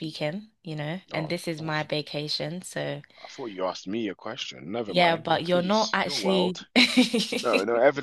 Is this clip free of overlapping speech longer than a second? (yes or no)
no